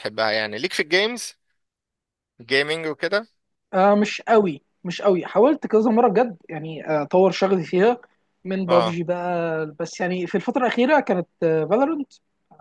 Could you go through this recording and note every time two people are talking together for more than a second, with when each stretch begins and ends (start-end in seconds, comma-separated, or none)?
none